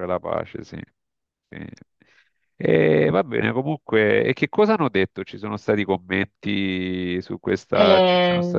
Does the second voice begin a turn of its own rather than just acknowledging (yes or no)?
yes